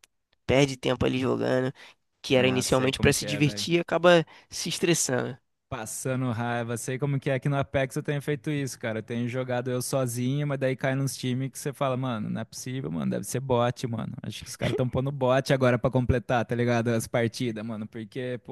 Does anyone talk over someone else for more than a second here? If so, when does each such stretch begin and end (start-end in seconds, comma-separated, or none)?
2.4-3.7